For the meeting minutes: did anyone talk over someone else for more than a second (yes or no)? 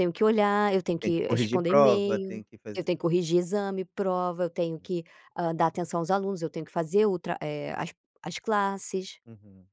yes